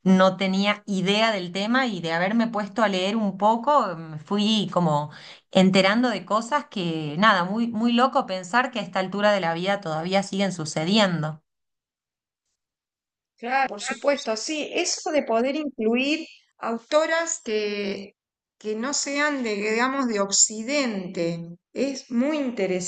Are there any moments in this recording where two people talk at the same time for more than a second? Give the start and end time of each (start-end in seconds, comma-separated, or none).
none